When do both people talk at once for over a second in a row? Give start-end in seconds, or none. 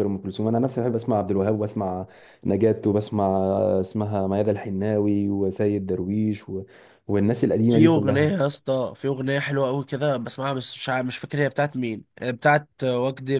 none